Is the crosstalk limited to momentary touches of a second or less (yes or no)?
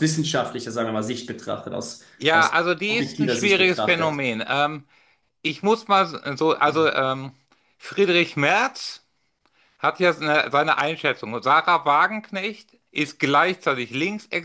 no